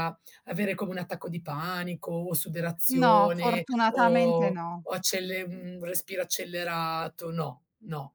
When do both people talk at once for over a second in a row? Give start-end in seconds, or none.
3.0-4.9